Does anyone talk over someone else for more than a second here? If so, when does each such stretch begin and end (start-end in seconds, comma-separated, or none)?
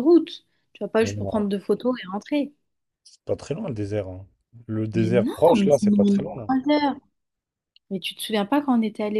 4.9-6.5